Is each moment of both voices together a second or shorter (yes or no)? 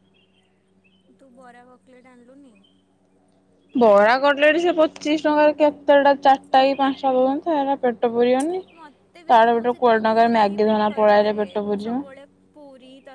no